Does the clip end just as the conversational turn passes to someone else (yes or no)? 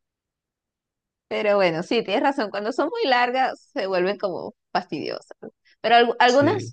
no